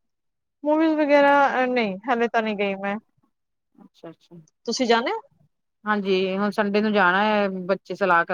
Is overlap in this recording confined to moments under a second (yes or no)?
yes